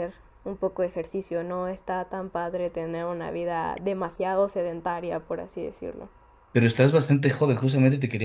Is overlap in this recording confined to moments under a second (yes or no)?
yes